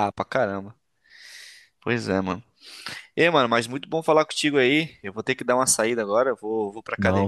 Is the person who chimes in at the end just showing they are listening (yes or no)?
yes